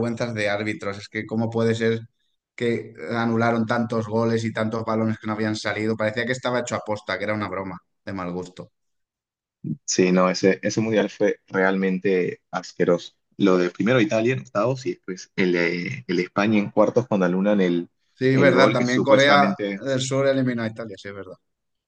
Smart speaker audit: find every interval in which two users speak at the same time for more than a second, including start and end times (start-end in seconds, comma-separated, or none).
18.3-19.8